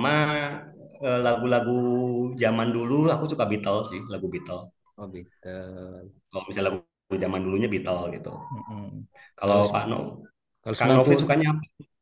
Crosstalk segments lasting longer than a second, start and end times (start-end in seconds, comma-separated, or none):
none